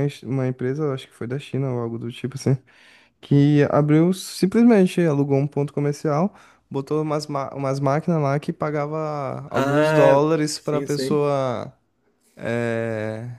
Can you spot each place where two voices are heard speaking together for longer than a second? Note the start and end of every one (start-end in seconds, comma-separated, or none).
9.6-11.2